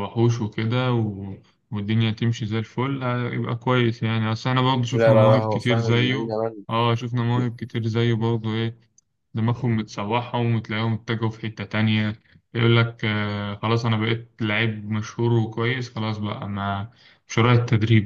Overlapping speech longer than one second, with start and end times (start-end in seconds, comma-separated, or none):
4.9-6.3